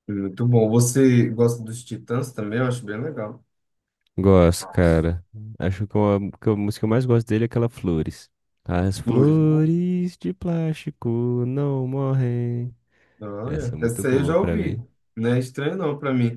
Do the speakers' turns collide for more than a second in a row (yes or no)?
yes